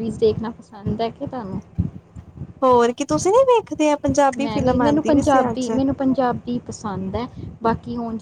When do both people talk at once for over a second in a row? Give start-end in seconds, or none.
4.4-5.7